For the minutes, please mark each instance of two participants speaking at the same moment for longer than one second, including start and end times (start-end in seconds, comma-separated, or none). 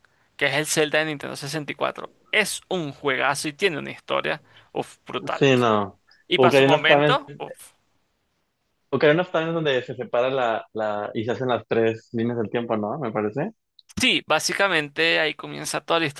6.3-7.5